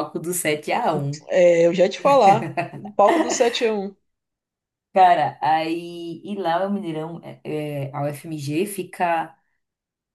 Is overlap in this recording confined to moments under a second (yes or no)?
yes